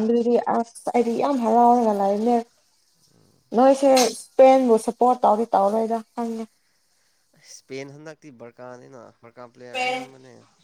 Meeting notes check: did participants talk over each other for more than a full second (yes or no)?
no